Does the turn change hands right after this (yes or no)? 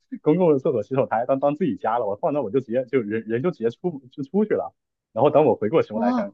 no